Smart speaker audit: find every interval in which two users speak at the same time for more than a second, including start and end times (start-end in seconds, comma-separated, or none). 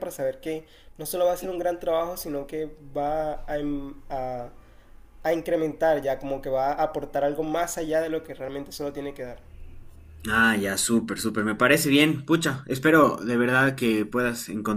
none